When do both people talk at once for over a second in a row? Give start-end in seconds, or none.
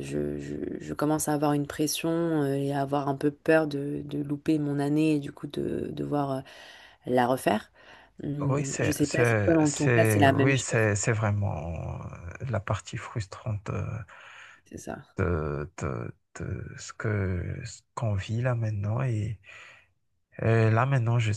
8.4-10.9